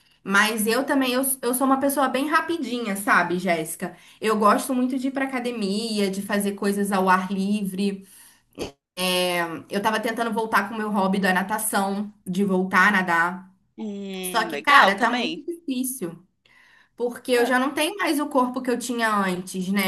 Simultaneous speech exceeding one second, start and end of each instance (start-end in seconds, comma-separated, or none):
14.2-15.4